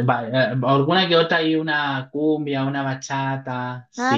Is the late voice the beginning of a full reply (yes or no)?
yes